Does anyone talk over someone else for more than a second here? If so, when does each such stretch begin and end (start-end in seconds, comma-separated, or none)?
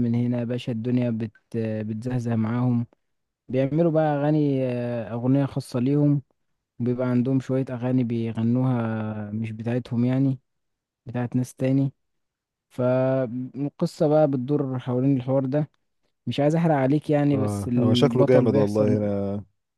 17.3-19.1